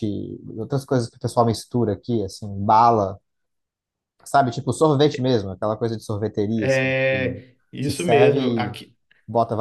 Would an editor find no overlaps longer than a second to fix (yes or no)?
no